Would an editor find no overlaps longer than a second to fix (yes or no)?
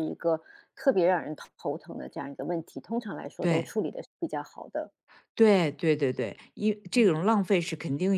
yes